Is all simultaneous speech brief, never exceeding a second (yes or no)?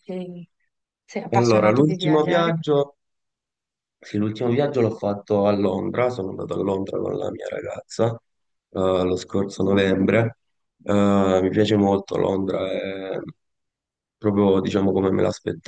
no